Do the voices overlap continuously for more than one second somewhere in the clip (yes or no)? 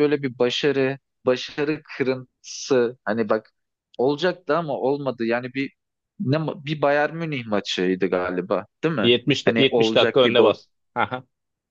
yes